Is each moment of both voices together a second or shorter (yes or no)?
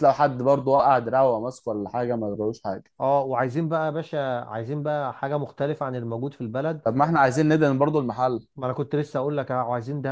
yes